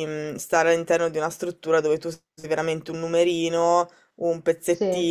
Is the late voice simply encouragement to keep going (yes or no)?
yes